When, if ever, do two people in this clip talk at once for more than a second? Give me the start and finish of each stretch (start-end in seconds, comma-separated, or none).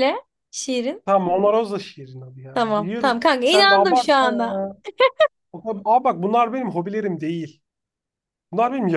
2.5-4.6